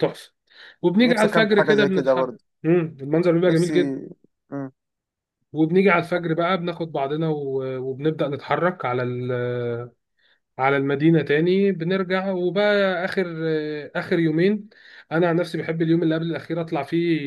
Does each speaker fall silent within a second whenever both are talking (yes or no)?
no